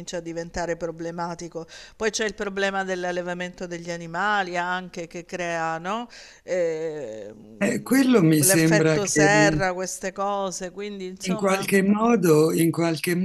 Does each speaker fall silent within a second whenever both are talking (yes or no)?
no